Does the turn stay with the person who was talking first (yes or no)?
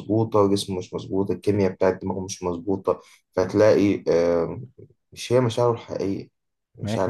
no